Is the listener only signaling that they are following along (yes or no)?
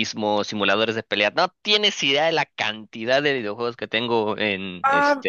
no